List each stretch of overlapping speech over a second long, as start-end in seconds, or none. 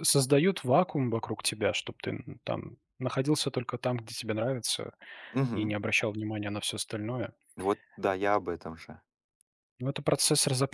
none